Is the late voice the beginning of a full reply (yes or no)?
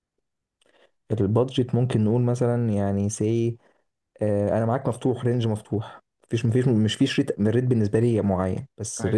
no